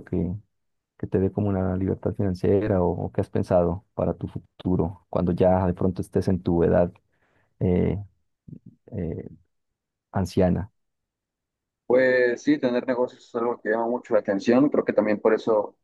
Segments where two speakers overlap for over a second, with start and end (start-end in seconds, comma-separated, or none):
none